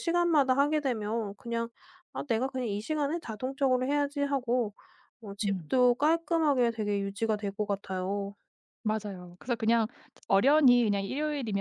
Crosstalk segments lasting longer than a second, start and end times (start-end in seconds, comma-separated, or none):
none